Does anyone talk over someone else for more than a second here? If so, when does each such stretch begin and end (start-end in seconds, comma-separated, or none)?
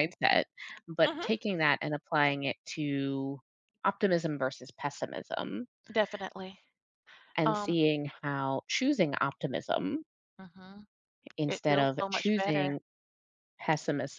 11.5-12.7